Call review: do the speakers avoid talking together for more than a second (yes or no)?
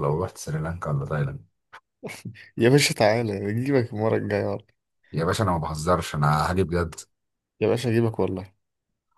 yes